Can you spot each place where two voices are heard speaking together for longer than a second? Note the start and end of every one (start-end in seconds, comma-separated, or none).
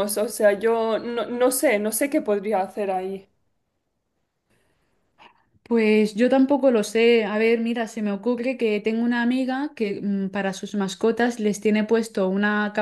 none